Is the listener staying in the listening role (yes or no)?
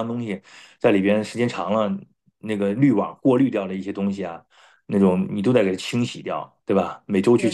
yes